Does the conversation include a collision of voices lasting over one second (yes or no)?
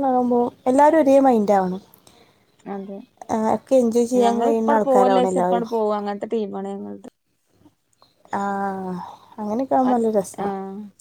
yes